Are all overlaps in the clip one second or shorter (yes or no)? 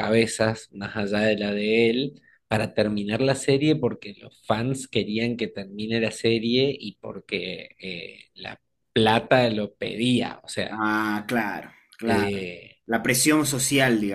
yes